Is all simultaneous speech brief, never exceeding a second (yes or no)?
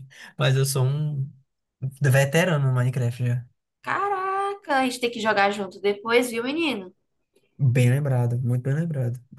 yes